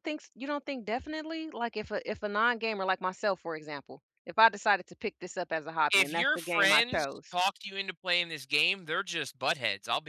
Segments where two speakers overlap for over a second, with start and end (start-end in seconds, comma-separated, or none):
5.9-7.3